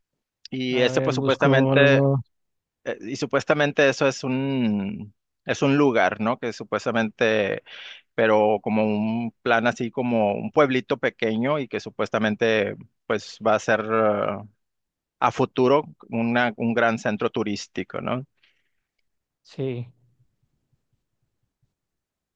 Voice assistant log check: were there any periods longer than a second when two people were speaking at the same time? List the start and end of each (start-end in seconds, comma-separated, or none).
0.7-2.0